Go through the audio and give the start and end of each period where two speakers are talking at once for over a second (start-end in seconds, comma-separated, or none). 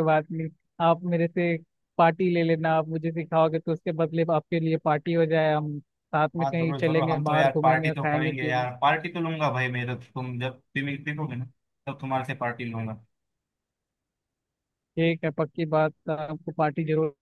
6.4-8.7